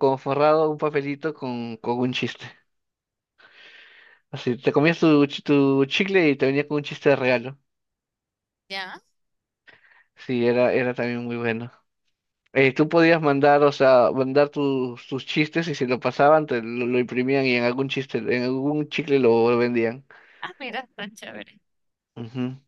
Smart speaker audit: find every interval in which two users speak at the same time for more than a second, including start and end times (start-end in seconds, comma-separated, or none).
none